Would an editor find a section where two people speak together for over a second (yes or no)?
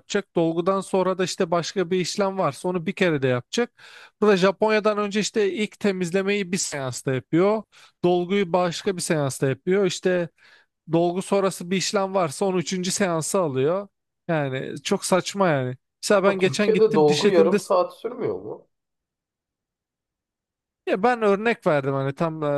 yes